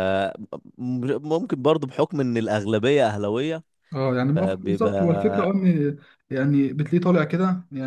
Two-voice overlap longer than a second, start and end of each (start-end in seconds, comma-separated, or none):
4.3-5.5